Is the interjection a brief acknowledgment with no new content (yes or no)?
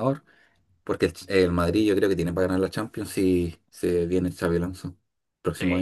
no